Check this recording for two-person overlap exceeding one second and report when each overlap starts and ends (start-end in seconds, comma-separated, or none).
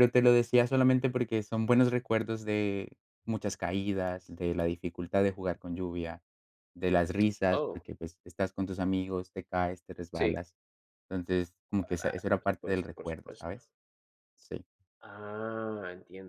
12.0-13.6